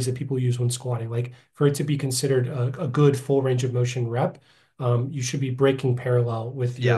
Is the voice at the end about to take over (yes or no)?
no